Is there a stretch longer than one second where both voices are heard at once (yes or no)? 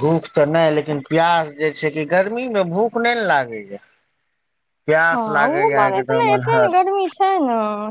yes